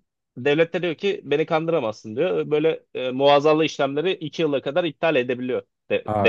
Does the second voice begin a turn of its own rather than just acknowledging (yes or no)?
yes